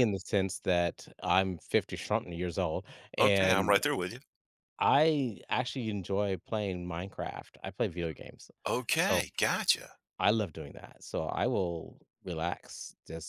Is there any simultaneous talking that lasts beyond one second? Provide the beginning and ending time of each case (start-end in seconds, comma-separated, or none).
none